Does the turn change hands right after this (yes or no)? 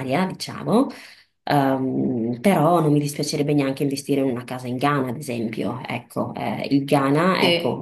no